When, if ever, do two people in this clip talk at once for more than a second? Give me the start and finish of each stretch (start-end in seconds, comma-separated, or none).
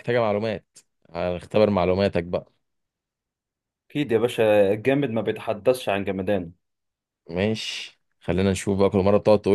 none